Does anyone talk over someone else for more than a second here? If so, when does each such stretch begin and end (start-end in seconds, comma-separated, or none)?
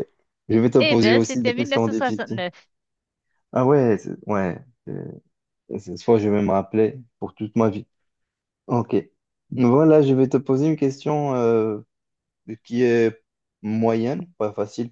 0.8-2.4